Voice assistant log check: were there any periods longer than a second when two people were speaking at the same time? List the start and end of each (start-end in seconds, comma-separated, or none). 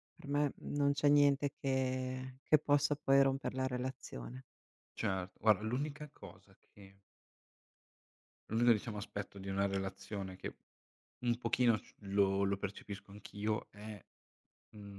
none